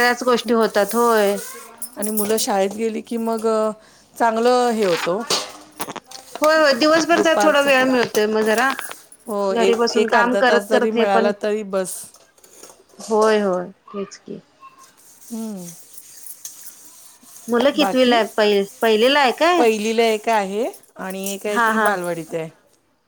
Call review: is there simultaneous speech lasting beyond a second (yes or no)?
yes